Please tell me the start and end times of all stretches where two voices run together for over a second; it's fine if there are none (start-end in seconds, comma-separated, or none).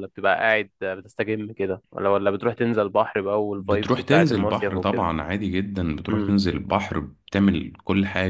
3.6-5.0